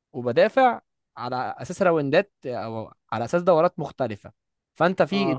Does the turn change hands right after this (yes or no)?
no